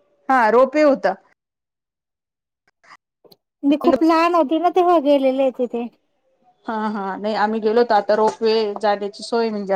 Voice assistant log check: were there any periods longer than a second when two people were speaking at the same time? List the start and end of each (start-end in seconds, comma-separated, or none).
none